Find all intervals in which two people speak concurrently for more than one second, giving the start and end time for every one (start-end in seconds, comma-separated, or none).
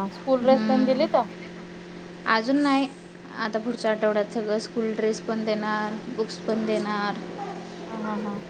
none